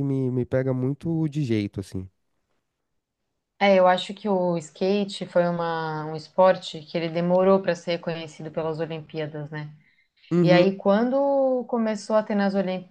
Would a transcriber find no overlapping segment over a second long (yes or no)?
yes